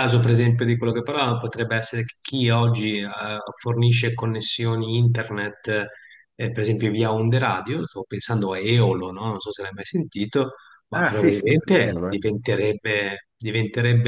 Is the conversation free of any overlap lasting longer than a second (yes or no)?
no